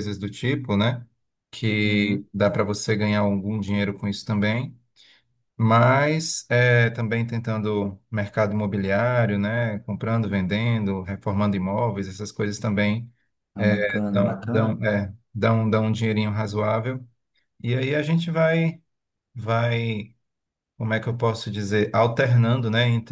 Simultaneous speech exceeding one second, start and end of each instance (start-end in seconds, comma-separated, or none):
13.6-14.8